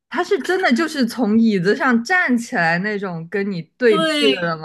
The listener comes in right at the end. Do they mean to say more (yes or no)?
yes